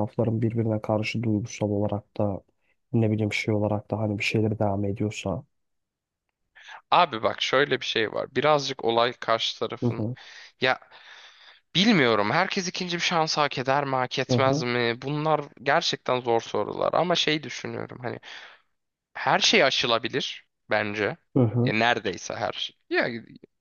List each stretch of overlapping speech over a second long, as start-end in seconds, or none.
none